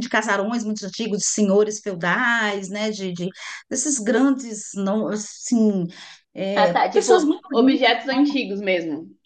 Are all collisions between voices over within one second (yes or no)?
no